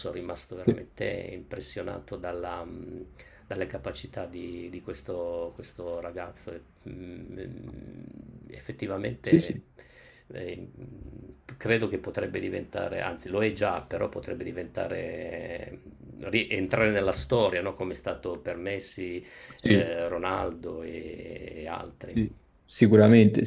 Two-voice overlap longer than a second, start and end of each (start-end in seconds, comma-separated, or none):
none